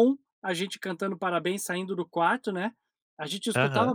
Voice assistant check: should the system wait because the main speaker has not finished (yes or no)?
yes